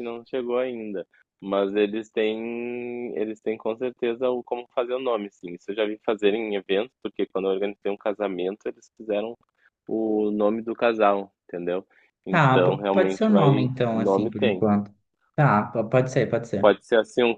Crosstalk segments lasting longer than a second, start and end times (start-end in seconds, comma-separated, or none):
12.3-14.6